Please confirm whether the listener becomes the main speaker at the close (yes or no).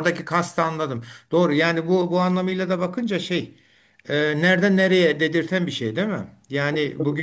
no